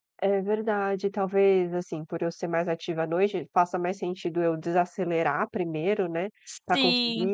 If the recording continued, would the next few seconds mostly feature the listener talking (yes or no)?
no